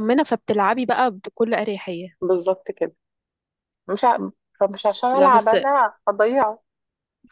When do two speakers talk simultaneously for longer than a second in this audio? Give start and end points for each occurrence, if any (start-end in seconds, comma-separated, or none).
none